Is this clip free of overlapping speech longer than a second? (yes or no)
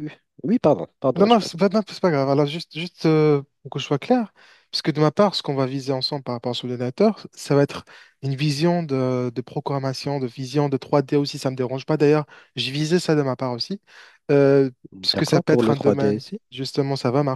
no